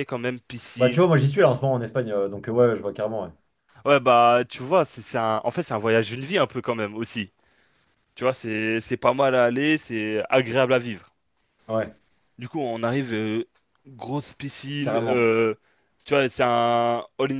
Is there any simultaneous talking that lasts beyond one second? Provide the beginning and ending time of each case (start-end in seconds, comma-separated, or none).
none